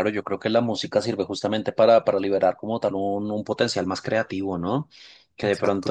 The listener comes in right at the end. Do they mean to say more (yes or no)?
no